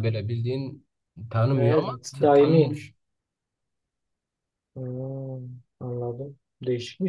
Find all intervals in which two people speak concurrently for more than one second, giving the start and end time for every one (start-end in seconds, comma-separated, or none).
1.5-2.8